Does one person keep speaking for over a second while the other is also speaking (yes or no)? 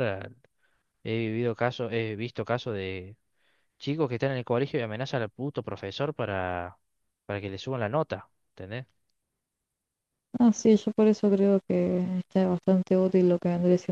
no